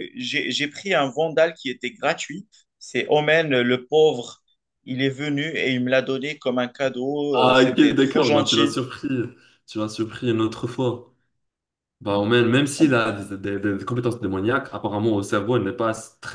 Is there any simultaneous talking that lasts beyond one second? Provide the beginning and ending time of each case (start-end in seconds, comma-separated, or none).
7.3-8.8